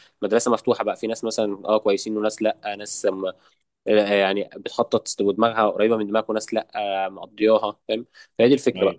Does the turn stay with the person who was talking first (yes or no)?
yes